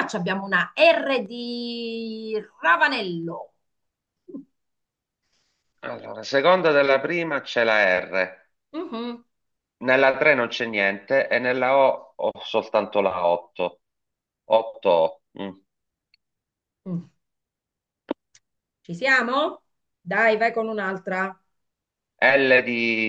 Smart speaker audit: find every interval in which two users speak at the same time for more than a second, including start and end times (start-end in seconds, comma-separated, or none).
none